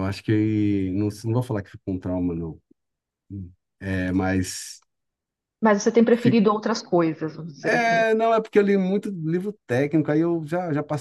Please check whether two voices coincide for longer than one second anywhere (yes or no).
no